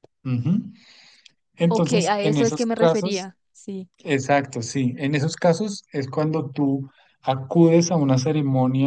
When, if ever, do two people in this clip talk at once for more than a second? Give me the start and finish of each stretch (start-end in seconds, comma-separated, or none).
1.7-3.3